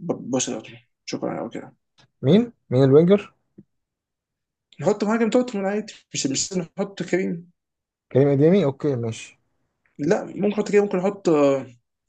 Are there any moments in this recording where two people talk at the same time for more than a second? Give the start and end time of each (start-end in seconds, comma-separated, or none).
none